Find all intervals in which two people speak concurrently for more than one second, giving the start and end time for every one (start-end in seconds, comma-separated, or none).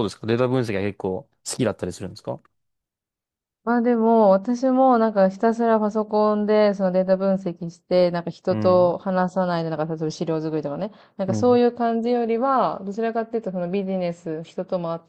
none